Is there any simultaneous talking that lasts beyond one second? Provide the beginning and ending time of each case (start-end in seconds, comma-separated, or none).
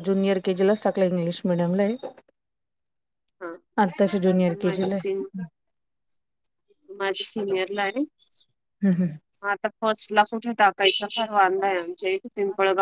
none